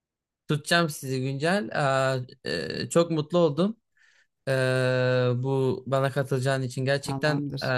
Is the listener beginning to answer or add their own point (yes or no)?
no